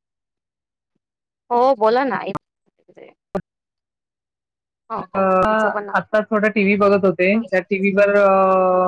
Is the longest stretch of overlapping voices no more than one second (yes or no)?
yes